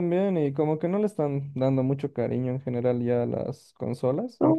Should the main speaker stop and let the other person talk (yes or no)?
yes